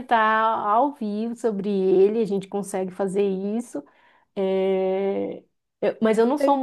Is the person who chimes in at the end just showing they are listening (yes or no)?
yes